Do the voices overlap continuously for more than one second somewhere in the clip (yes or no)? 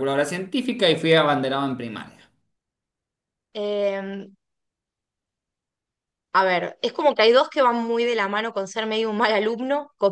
no